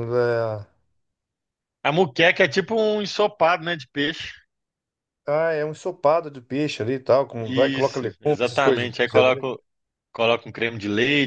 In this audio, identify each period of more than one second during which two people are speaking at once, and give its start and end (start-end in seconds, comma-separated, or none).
7.5-8.9